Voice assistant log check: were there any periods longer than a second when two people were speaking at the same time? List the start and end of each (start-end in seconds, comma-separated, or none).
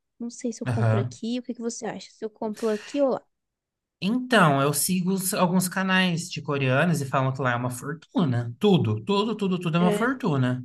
none